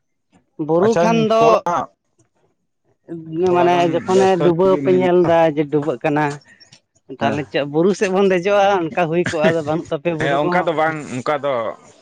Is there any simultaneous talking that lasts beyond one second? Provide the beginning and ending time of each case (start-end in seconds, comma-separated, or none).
3.5-5.1